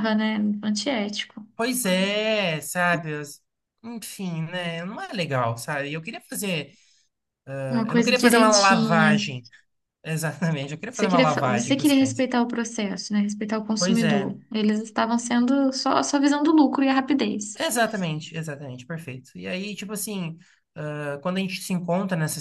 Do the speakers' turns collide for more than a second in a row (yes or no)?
yes